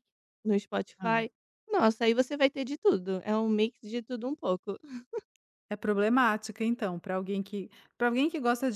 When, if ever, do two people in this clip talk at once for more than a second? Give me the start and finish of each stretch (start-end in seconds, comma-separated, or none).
none